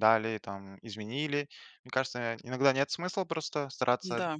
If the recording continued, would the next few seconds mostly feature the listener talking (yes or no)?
no